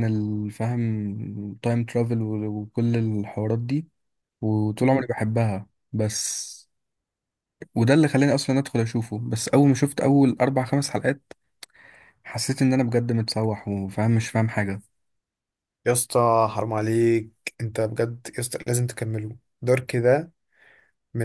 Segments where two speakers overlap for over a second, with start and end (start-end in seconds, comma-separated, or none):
none